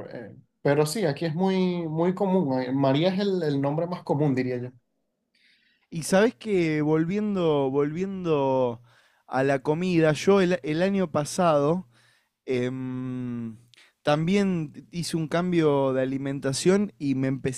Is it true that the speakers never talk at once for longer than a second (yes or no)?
yes